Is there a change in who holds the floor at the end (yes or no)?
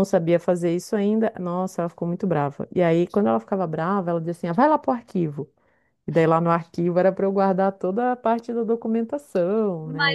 yes